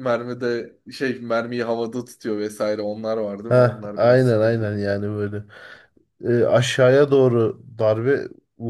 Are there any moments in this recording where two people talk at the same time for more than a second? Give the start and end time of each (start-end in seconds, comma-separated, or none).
3.5-4.7